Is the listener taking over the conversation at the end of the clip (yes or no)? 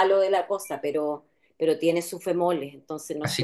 yes